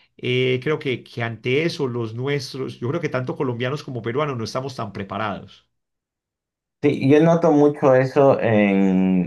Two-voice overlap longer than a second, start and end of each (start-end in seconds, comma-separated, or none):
none